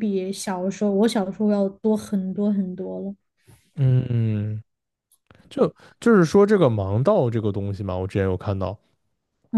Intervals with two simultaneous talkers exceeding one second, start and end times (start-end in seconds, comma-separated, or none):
none